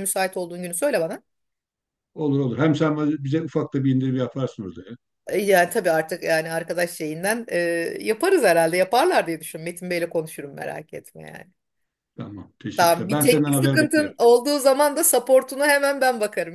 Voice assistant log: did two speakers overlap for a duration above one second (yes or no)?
yes